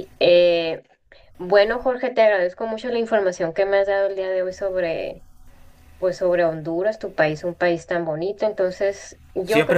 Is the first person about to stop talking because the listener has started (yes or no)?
yes